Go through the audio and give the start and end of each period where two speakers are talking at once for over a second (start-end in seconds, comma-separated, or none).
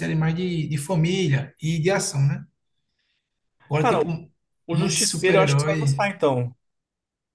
4.7-6.1